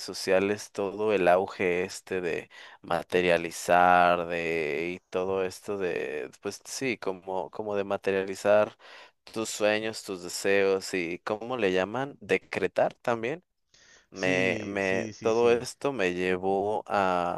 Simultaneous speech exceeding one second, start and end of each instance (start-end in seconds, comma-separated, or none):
14.1-15.7